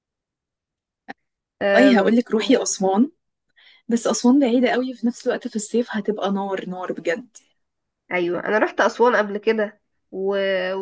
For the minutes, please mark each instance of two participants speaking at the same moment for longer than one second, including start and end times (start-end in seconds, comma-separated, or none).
none